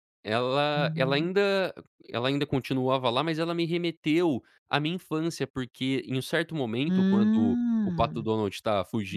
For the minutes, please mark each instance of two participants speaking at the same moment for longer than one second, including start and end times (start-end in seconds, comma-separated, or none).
6.9-8.2